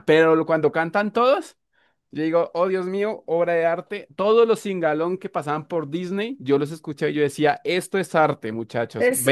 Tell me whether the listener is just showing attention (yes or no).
no